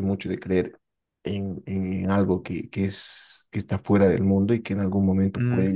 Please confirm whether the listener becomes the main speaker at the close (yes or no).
no